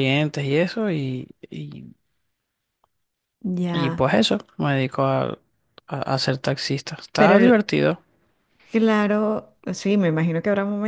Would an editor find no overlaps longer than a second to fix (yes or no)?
yes